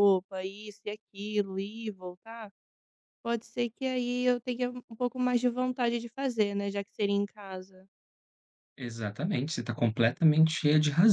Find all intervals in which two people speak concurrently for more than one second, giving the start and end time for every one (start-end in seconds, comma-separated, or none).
none